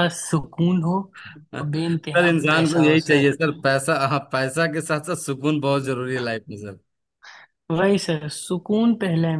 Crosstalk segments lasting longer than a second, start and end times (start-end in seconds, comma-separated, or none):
1.5-3.3